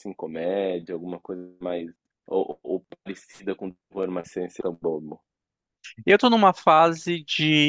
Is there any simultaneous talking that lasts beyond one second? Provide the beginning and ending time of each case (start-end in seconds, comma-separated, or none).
none